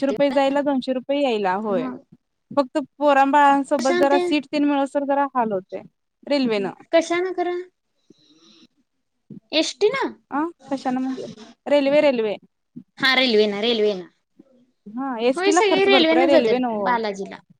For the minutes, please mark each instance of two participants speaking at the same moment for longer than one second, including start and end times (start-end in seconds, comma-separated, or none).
15.4-16.9